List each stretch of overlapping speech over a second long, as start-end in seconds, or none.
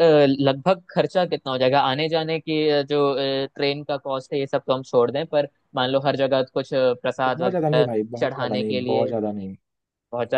7.2-9.1